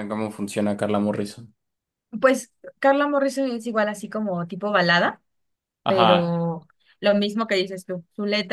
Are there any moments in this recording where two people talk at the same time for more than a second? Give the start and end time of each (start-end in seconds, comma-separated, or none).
none